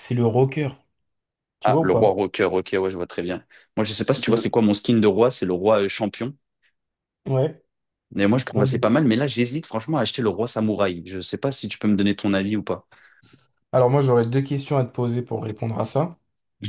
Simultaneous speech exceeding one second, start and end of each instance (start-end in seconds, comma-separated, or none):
none